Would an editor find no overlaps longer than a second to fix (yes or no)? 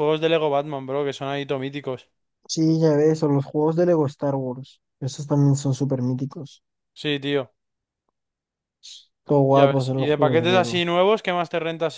no